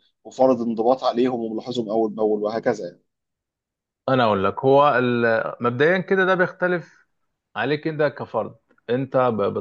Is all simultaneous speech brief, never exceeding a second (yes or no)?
yes